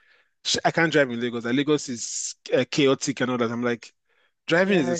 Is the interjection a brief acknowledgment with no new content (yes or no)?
yes